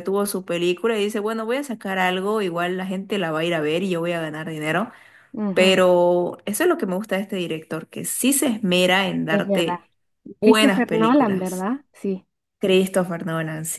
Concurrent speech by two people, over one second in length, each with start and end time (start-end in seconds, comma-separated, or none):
10.4-11.7